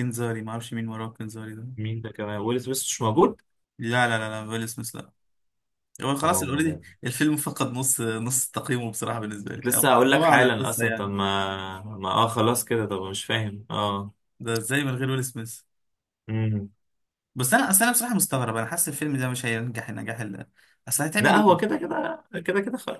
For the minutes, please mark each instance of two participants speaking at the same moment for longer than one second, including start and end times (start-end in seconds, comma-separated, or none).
9.5-11.1